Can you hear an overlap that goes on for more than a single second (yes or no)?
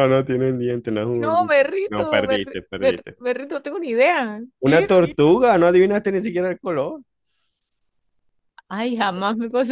yes